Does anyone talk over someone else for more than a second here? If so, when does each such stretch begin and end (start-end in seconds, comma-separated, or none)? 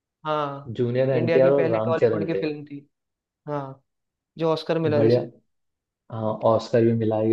1.1-2.4